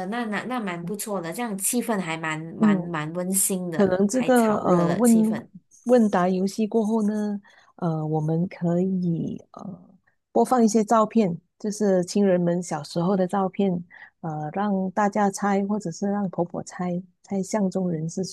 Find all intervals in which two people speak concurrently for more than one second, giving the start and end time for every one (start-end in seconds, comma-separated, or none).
3.7-5.1